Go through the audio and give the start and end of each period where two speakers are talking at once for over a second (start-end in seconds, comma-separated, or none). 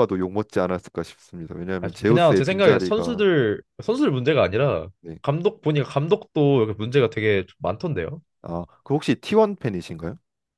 1.8-3.2